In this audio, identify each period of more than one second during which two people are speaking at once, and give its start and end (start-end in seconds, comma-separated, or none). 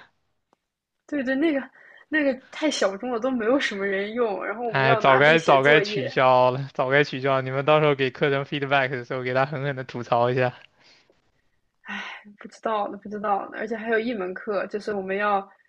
4.7-6.1